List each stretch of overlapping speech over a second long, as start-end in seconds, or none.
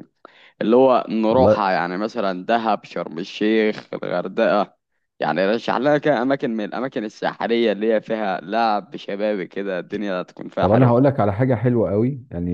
none